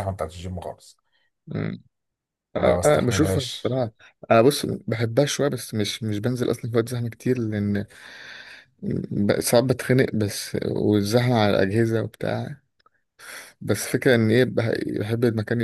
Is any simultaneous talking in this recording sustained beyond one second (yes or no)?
yes